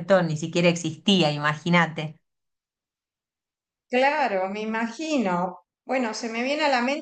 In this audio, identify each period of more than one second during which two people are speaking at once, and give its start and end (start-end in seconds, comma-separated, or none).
none